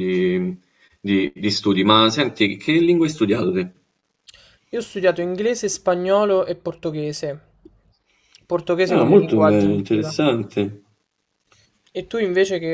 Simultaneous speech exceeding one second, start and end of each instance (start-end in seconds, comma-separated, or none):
8.9-10.1